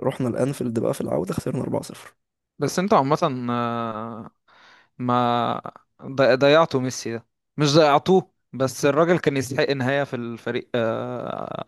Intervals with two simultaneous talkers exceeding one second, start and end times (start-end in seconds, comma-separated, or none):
none